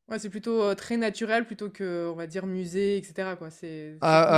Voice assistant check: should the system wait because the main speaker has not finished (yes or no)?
no